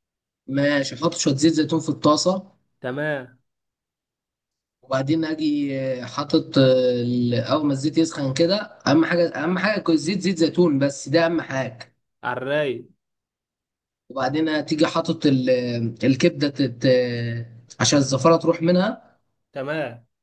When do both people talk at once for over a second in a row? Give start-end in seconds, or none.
none